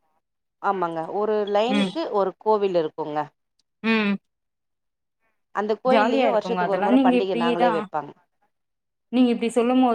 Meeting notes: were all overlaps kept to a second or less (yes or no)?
no